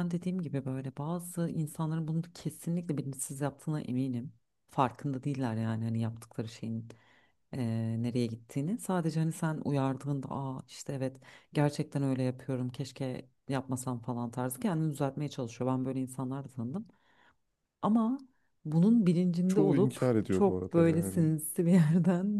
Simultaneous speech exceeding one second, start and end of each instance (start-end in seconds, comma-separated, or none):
19.5-21.3